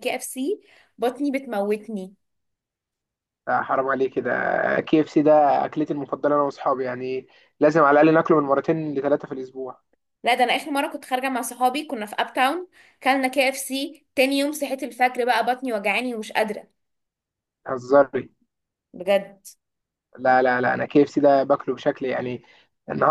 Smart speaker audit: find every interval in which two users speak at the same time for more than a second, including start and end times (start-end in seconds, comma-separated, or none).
none